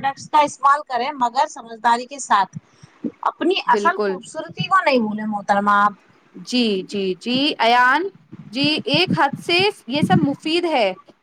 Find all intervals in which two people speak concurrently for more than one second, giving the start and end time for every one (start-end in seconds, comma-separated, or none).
none